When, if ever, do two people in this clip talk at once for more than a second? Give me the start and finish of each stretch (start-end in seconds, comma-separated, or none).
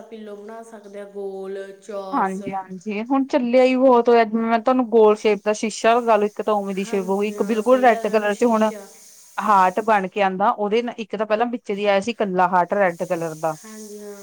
6.8-8.7